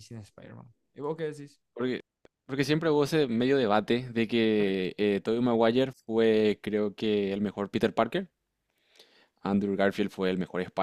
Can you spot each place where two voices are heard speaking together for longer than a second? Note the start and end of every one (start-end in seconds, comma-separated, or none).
none